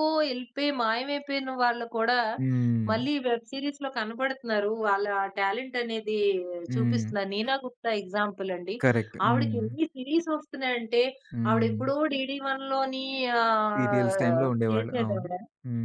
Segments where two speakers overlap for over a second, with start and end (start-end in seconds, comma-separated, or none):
13.7-15.3